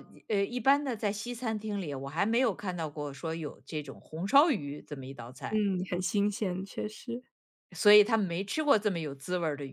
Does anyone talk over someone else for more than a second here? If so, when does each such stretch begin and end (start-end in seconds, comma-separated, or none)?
none